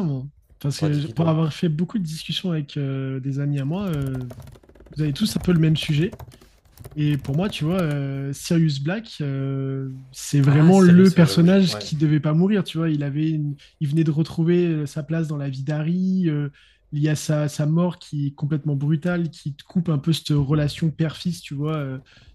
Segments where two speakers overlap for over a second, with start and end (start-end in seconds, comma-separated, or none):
10.5-11.8